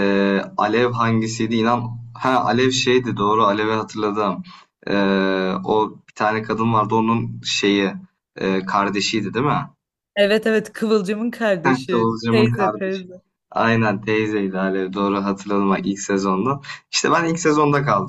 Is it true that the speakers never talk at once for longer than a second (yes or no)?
no